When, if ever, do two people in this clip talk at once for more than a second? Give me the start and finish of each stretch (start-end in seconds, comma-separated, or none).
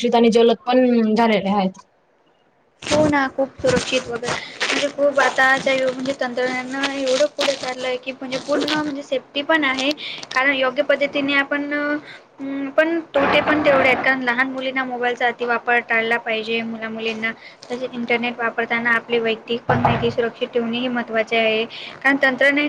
none